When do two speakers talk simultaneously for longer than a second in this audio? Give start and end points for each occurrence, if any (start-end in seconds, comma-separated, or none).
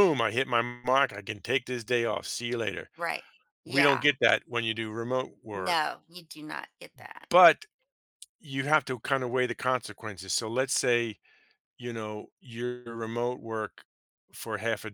none